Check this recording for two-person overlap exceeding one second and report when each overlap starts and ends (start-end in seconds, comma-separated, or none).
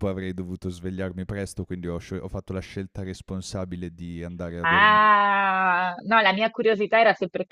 none